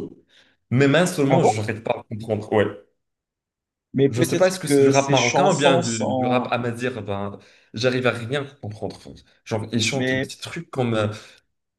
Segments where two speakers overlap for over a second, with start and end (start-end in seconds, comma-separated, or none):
4.1-6.5